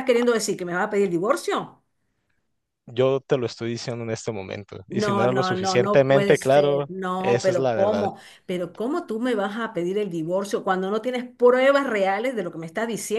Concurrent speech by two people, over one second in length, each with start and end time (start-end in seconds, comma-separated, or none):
4.9-8.1